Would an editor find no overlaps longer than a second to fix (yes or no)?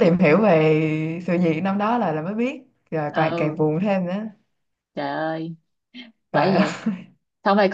yes